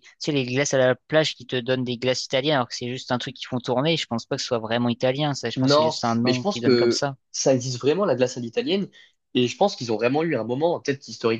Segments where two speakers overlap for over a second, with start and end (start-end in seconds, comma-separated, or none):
5.6-7.2